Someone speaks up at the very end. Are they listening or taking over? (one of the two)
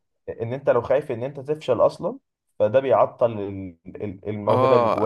taking over